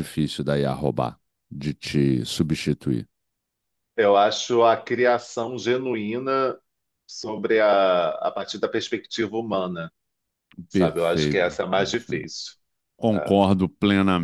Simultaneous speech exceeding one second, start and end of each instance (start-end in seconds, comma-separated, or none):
10.7-12.3